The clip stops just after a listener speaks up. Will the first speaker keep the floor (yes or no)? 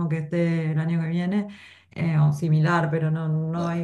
yes